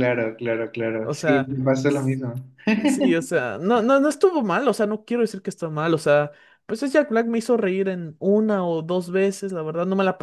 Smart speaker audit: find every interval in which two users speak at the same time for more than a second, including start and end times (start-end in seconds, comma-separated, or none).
none